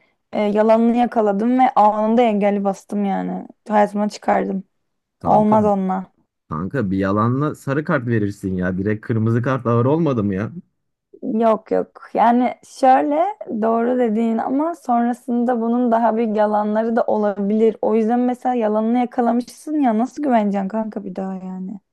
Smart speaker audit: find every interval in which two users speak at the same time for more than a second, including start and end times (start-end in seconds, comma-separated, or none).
none